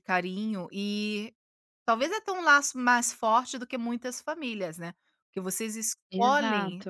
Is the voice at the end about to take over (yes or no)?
no